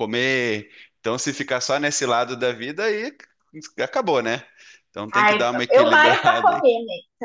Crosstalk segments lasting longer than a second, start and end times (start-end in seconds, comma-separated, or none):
5.1-6.7